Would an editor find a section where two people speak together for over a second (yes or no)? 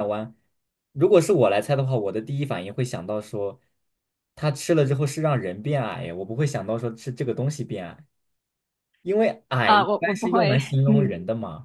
yes